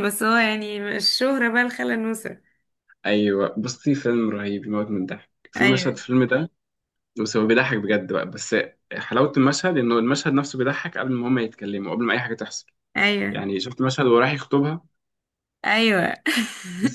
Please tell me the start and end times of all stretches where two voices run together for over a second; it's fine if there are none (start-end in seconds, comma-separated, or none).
none